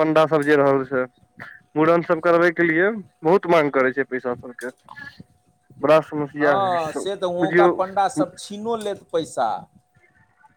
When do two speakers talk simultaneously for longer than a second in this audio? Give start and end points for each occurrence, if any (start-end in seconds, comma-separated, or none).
none